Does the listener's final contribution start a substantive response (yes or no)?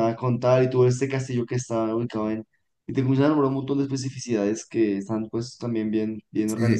yes